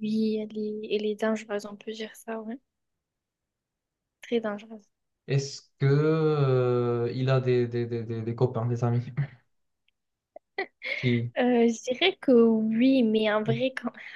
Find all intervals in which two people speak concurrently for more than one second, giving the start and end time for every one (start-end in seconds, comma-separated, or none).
none